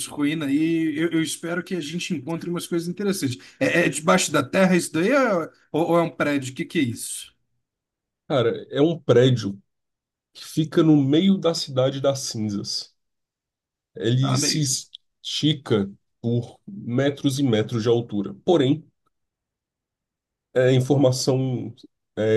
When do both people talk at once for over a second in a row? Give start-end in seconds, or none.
none